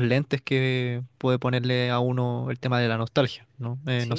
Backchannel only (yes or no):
no